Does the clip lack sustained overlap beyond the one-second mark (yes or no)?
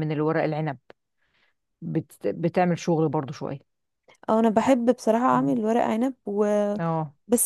yes